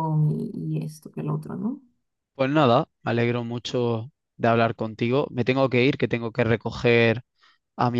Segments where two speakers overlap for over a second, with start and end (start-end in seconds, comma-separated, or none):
none